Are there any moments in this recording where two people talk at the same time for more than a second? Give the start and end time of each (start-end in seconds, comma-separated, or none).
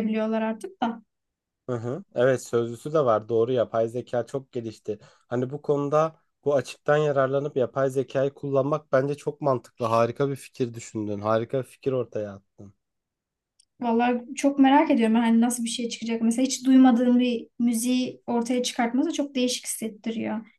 none